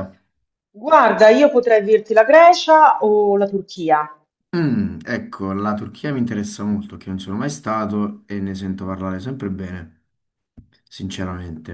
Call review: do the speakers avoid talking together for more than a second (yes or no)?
yes